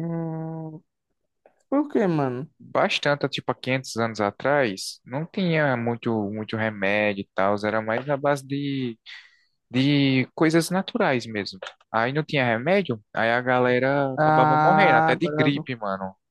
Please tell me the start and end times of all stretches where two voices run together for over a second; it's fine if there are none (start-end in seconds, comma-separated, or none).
14.2-15.5